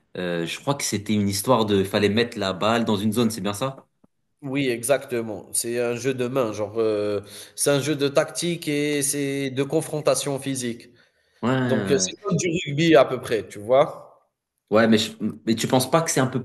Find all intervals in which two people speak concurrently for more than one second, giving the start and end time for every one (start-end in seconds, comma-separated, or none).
none